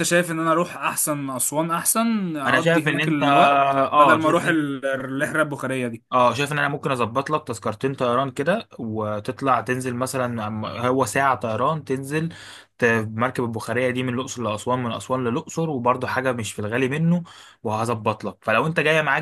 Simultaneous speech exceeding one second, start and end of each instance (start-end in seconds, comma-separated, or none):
2.5-4.6